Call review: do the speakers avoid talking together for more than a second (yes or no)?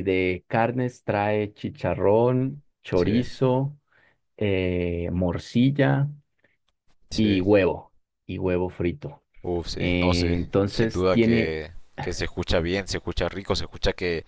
no